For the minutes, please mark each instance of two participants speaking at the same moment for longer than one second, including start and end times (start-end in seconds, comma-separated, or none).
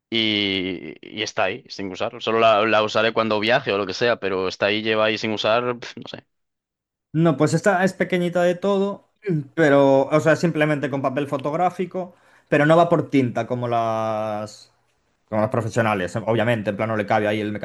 none